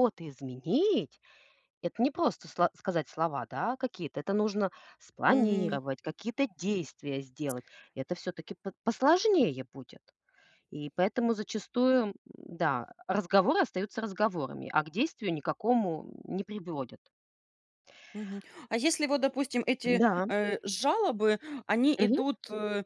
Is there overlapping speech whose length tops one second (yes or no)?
no